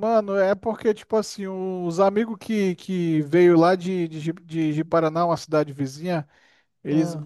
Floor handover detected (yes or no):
no